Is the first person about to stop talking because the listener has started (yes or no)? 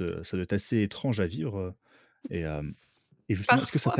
no